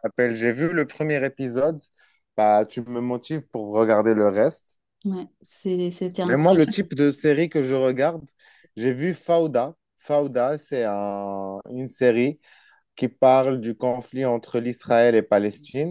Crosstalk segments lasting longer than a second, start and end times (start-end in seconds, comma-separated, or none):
none